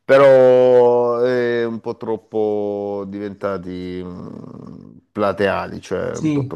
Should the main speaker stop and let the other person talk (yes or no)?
no